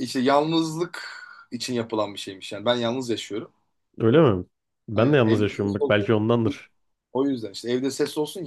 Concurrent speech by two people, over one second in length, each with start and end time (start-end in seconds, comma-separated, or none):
none